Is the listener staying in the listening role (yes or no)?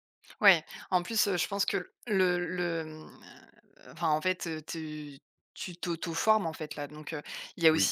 yes